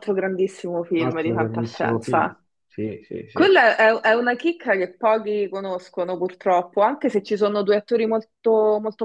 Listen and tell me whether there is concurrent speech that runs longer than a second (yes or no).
yes